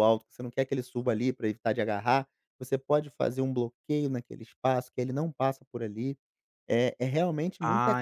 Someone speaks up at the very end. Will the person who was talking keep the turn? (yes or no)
yes